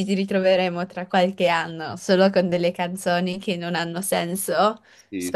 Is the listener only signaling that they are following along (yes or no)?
no